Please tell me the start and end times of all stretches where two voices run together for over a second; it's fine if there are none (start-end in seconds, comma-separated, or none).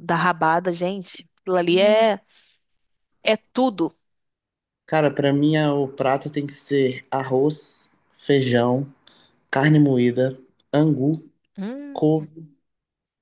none